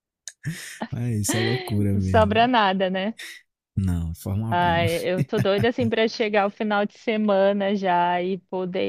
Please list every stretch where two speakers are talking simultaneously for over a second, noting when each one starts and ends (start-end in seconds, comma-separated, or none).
none